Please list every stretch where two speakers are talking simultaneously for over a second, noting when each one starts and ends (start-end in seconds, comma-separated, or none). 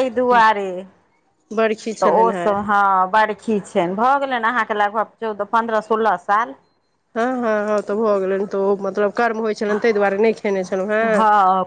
none